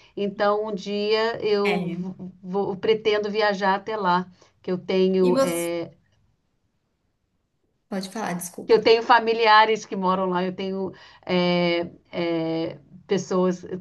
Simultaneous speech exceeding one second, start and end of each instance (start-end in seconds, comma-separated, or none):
none